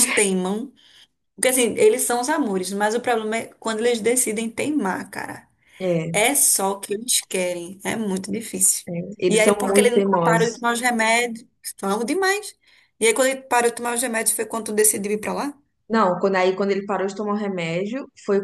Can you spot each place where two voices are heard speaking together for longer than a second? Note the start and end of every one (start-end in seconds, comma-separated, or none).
9.3-10.6